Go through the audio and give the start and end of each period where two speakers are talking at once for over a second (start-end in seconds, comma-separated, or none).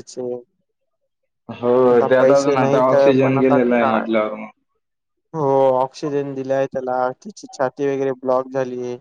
1.9-4.1